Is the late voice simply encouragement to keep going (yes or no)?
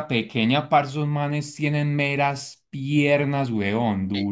no